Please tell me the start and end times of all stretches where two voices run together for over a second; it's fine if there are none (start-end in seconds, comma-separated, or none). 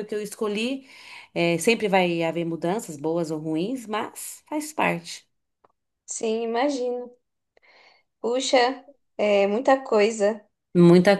none